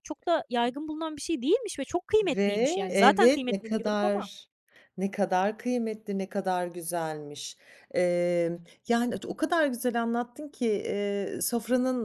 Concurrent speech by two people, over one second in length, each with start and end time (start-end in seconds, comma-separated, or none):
2.2-4.3